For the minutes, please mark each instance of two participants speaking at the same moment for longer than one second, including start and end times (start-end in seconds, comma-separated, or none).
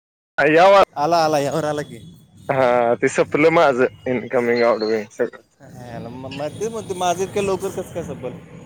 none